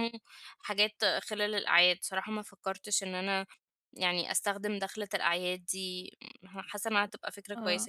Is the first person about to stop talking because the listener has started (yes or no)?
yes